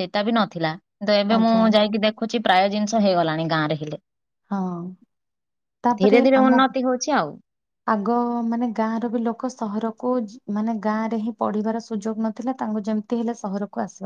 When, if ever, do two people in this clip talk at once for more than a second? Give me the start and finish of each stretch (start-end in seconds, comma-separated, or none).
none